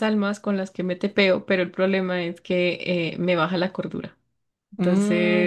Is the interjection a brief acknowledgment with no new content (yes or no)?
no